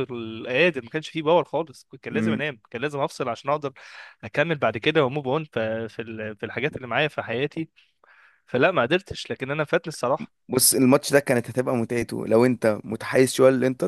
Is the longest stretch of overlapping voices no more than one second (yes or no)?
yes